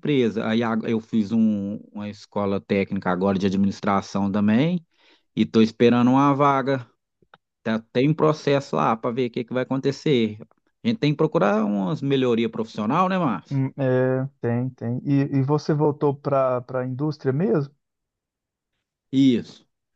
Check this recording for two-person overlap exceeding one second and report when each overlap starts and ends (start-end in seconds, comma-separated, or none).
none